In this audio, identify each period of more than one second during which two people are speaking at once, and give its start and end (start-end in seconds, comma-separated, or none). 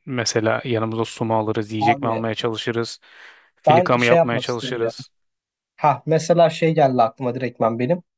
3.6-4.9